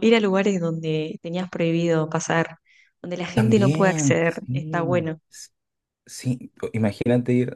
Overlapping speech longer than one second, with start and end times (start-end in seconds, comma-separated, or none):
3.3-5.2